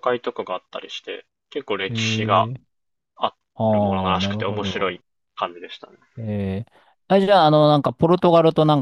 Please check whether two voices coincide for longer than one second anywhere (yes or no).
yes